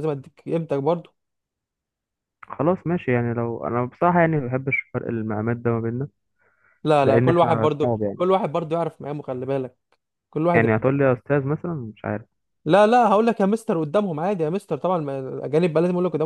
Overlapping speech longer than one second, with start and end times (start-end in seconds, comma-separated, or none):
7.0-8.2